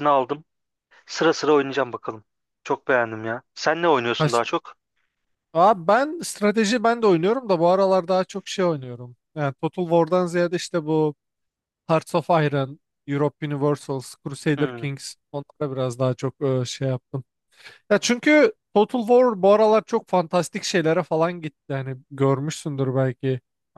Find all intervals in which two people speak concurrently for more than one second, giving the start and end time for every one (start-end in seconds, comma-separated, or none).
none